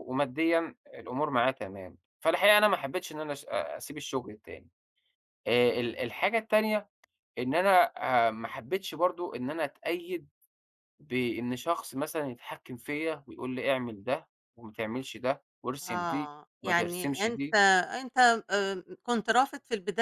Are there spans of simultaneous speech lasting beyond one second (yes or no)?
yes